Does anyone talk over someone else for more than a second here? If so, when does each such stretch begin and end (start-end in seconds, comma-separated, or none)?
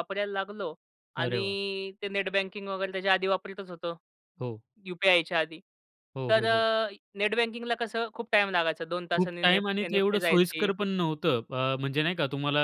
9.1-10.7